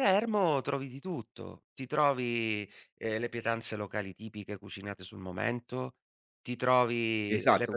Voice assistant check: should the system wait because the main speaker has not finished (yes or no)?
no